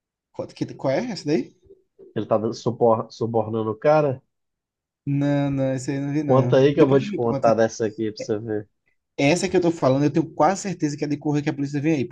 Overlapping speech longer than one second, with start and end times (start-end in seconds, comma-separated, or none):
6.2-7.5